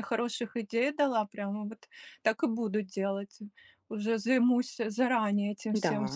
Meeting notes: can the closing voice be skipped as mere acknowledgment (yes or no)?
yes